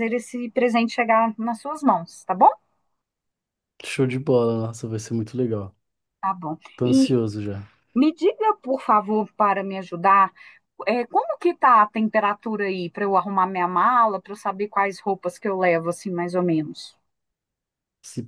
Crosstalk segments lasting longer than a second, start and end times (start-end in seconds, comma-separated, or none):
none